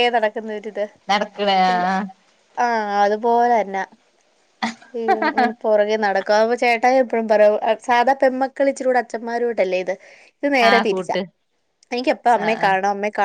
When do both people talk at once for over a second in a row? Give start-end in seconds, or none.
none